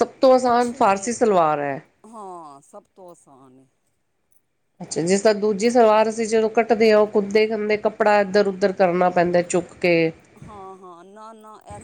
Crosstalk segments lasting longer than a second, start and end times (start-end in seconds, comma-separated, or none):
none